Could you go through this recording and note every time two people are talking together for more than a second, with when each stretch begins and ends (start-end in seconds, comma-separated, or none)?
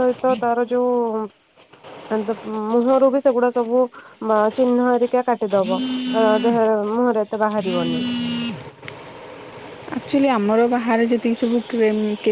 none